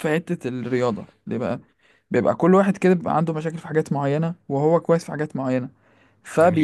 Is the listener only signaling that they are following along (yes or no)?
yes